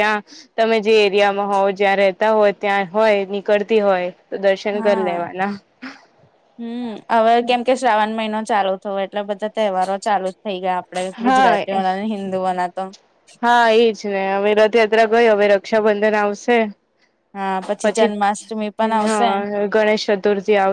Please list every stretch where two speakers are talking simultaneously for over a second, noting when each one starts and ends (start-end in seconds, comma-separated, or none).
17.8-19.3